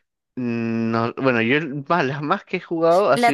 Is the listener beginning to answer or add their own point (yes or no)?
yes